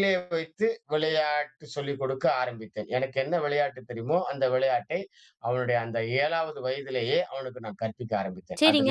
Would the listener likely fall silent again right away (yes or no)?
no